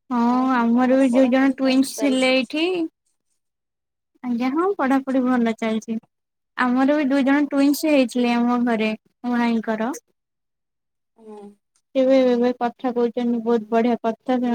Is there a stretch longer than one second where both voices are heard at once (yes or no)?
yes